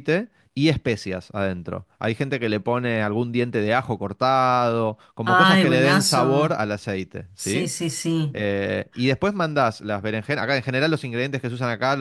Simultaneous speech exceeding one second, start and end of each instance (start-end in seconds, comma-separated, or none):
5.2-6.6